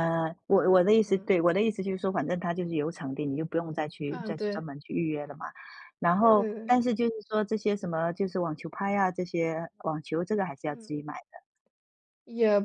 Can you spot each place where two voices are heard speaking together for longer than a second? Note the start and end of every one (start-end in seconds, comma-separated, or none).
none